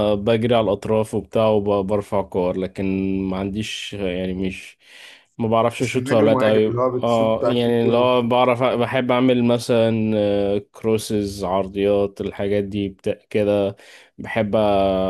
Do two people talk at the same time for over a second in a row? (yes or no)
yes